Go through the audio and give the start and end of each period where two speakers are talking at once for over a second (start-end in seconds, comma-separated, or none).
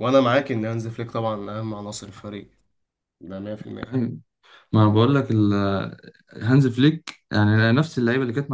none